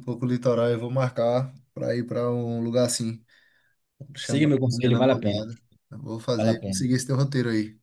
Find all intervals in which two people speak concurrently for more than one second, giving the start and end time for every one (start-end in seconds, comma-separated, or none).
4.2-5.4